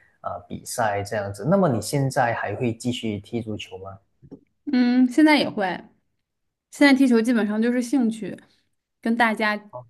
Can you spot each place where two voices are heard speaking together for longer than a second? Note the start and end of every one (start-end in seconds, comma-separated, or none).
none